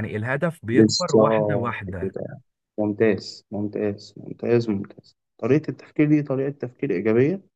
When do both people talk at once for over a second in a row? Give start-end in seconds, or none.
0.7-2.1